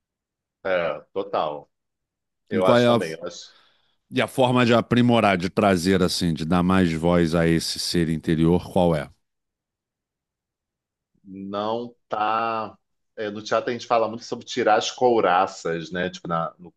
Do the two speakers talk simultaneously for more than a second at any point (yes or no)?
no